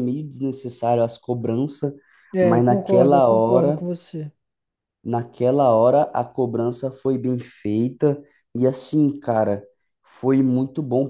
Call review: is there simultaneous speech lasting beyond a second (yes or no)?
yes